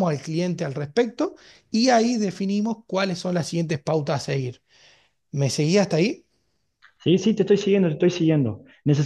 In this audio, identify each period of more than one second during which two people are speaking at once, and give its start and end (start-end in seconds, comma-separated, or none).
none